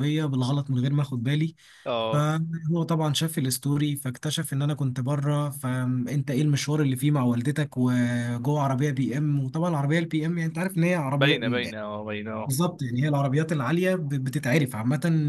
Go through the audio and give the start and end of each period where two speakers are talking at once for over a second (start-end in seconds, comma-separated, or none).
none